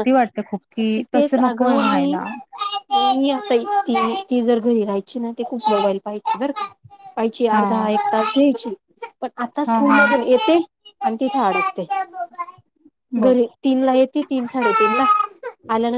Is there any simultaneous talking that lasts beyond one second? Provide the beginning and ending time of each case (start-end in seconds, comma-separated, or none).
0.8-2.2